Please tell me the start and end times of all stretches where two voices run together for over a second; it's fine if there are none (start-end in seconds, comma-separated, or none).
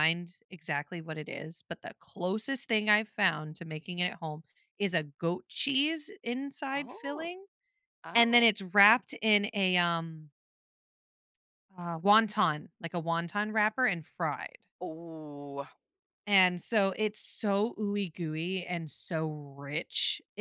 none